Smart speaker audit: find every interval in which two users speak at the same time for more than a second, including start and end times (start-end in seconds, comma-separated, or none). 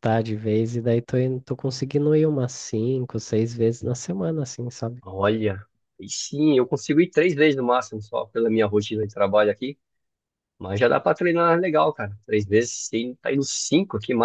none